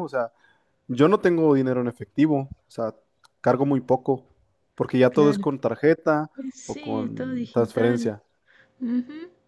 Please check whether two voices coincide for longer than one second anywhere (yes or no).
yes